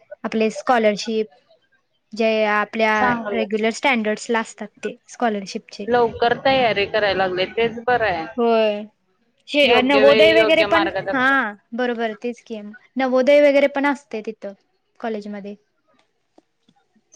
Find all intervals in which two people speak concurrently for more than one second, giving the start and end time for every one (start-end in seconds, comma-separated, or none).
9.7-11.2